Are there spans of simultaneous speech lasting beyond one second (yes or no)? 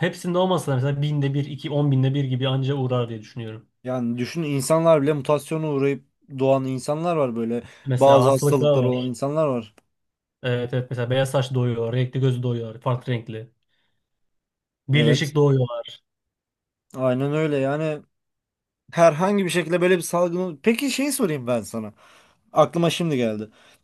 yes